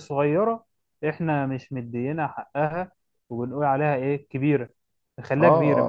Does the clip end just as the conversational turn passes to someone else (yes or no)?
yes